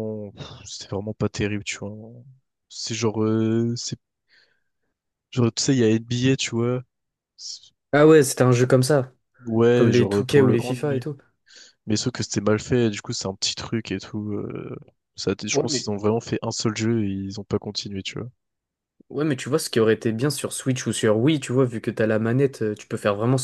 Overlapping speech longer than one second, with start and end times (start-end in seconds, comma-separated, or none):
9.7-11.0